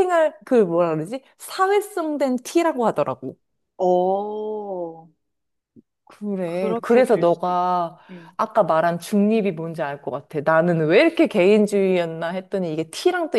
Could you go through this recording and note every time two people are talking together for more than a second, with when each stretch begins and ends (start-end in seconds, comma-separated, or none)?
6.5-8.0